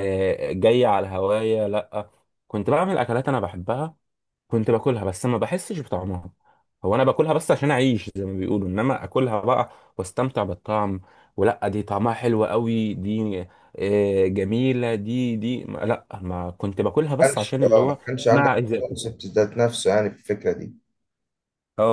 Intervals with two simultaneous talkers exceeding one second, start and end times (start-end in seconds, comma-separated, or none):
17.2-19.0